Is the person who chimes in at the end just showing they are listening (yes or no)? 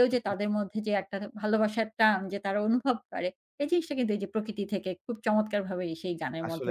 no